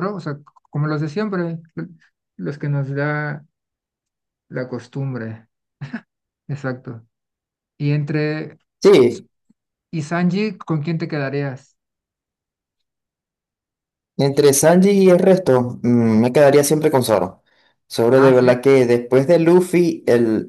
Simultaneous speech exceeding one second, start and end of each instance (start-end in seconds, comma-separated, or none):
none